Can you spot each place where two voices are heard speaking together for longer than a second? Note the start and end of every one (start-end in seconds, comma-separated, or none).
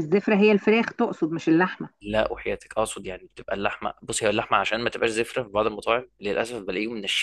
none